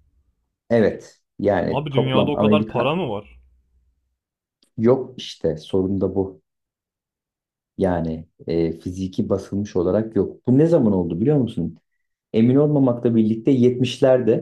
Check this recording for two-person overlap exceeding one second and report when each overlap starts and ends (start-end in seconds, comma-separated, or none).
1.7-3.0